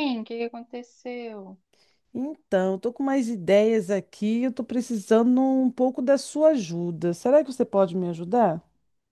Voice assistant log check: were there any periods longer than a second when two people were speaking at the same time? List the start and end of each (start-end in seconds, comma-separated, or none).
none